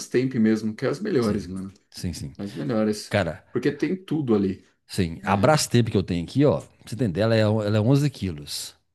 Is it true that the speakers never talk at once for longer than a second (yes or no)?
yes